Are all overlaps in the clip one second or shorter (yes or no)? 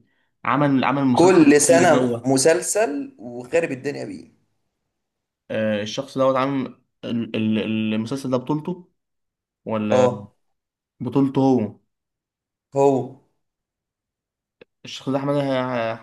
no